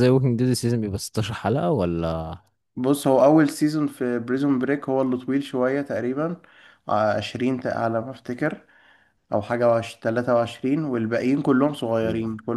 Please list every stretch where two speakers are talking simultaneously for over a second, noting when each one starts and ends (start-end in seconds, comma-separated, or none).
none